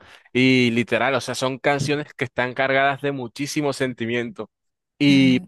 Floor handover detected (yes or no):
no